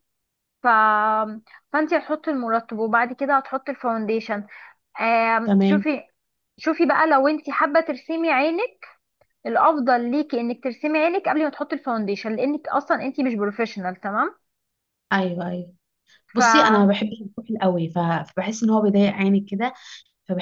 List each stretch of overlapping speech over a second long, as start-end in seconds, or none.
none